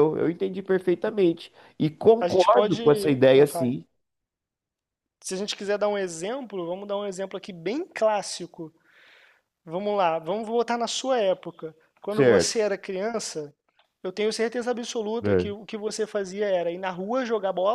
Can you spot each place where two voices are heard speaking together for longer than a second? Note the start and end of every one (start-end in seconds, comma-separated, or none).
2.2-3.7